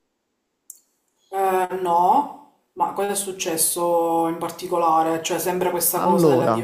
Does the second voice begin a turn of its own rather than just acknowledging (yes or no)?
no